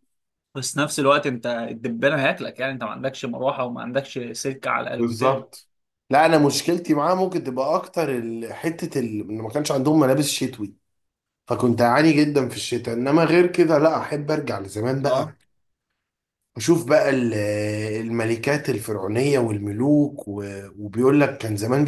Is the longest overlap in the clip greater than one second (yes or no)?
no